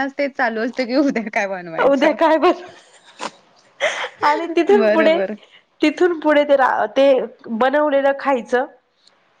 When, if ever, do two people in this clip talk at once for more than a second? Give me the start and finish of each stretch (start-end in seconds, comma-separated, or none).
none